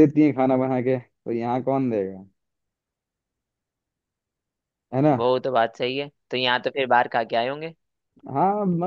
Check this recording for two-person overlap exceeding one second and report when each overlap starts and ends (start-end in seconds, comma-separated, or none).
none